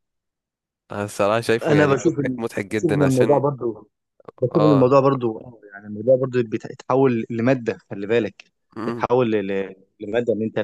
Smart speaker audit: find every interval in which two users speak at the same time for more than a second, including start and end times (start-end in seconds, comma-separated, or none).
1.6-3.4